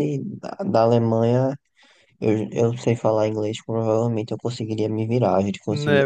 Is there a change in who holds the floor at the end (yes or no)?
yes